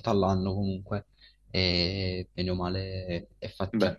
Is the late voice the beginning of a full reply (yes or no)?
yes